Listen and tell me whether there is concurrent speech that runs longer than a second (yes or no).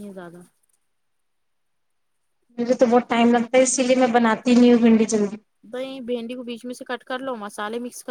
no